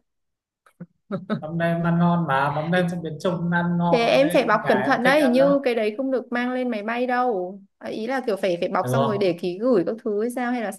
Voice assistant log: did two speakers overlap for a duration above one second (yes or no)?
yes